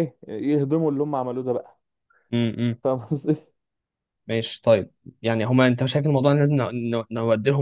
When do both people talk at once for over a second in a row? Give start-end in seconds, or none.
none